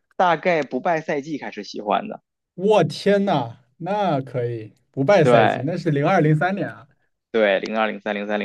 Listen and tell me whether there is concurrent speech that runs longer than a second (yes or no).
no